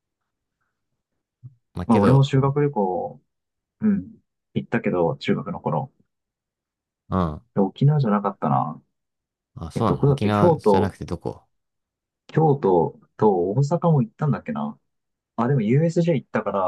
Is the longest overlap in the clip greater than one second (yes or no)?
yes